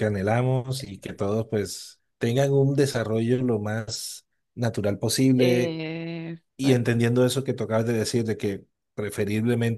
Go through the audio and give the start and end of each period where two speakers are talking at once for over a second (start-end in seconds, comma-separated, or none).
none